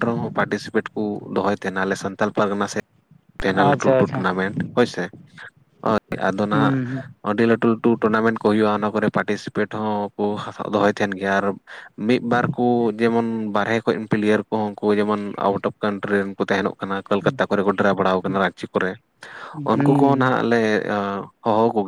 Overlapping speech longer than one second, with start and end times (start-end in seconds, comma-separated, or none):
none